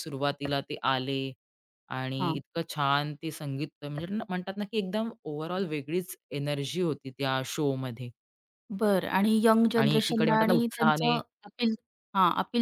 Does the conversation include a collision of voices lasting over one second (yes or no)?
yes